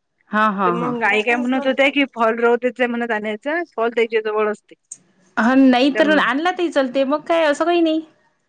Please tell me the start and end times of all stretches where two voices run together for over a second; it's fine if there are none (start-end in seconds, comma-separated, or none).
0.7-2.0